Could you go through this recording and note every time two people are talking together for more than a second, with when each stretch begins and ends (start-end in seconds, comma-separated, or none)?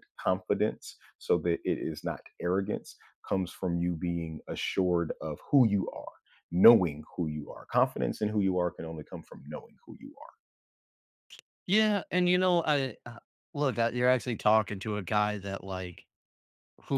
none